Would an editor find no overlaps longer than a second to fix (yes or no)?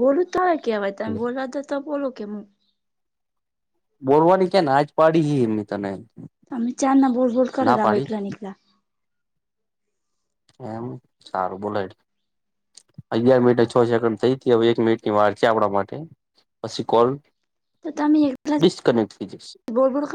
yes